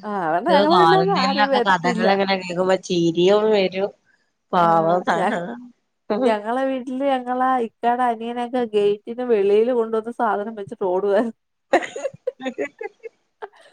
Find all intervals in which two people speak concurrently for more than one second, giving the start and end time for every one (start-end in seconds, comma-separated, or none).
0.8-2.1